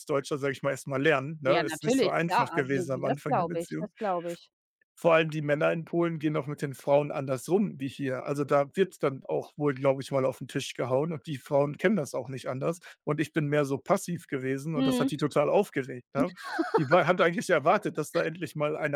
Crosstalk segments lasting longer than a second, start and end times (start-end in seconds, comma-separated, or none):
1.4-3.9